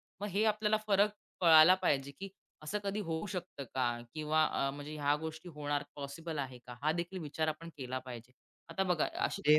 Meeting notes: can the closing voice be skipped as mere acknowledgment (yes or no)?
no